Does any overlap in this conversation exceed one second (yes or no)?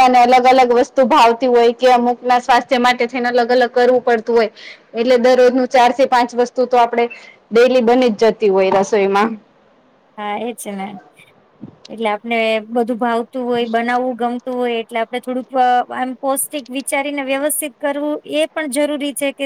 no